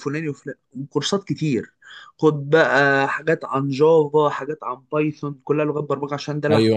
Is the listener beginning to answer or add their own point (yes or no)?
yes